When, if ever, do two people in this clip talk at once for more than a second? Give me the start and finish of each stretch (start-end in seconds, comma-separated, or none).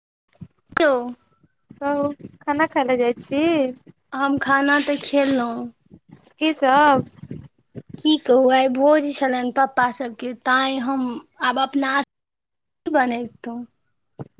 none